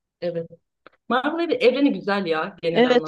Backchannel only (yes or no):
no